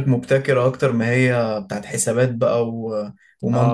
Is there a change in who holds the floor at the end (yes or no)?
yes